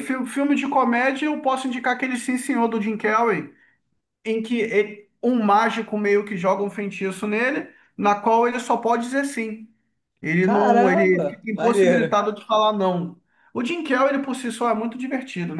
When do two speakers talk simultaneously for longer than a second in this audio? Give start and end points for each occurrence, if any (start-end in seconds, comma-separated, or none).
10.4-12.1